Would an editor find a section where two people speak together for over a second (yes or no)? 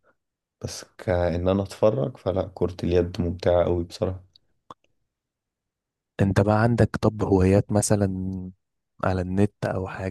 no